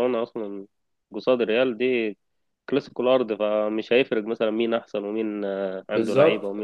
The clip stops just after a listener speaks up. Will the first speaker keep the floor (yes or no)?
no